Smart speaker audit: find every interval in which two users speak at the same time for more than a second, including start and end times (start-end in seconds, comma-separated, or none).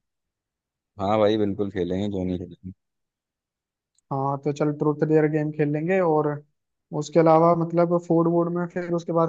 none